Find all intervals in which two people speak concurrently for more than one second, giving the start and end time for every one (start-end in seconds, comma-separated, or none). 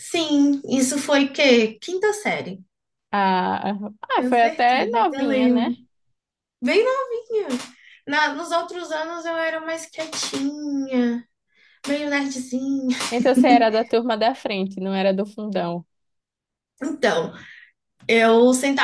4.2-5.7